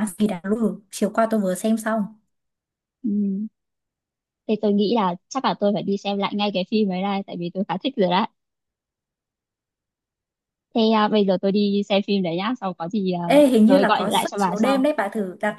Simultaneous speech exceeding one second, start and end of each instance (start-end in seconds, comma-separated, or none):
13.3-14.9